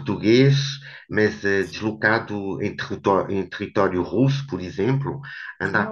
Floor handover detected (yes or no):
no